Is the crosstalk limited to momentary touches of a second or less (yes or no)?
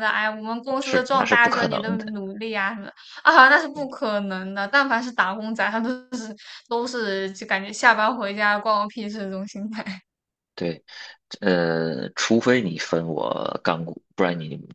no